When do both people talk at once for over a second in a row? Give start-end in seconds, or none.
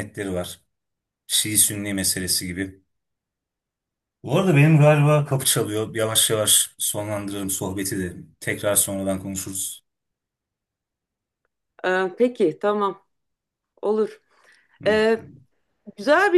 none